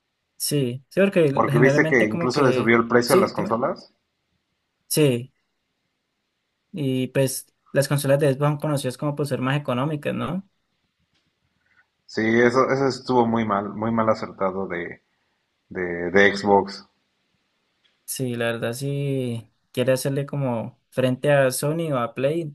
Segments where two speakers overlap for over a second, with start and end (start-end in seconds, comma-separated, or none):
1.3-3.6